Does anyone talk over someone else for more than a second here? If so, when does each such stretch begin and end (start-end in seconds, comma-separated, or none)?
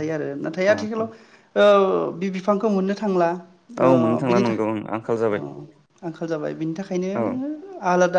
3.6-5.4